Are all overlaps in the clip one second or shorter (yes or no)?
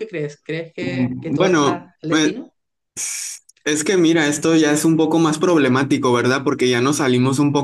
no